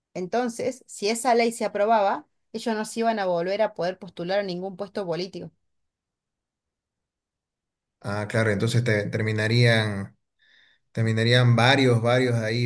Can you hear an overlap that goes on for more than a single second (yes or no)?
no